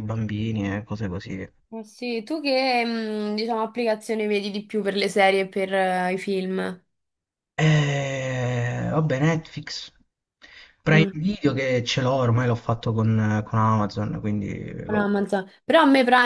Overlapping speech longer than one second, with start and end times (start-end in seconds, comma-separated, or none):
none